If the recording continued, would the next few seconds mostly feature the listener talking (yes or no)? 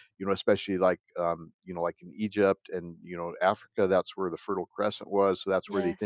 no